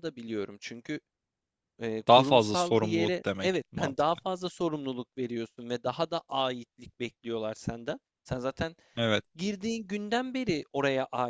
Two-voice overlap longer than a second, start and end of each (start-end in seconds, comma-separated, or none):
2.1-4.2